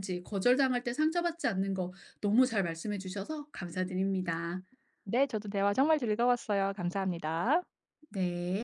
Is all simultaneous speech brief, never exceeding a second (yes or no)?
yes